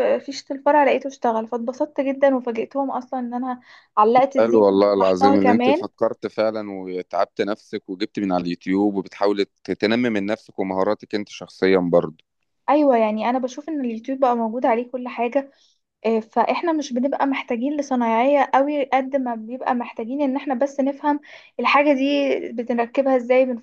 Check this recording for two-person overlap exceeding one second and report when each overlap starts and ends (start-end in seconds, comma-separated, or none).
4.4-5.9